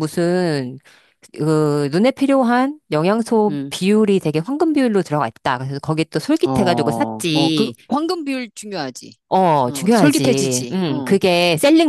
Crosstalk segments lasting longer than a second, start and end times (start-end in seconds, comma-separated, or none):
6.5-7.7, 9.7-11.2